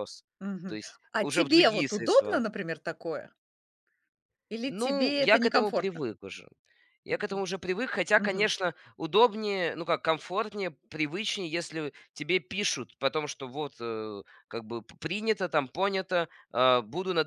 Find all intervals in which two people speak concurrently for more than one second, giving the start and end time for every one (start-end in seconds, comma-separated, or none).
0.7-2.4, 4.7-6.1